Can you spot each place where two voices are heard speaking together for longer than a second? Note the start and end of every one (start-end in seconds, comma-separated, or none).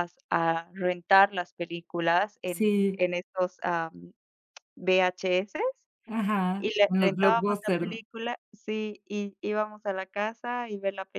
6.6-8.0